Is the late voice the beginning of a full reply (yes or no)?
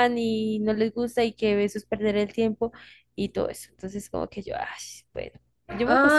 yes